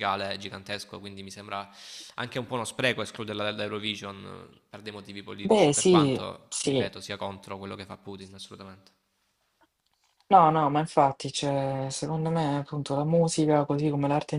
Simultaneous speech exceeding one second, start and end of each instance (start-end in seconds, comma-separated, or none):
5.4-6.9